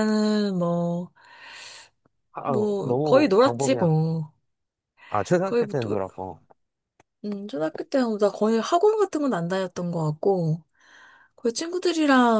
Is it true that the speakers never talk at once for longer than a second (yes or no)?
no